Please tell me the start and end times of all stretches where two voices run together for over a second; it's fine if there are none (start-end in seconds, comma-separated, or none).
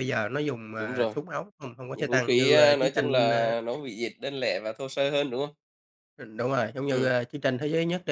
1.9-3.5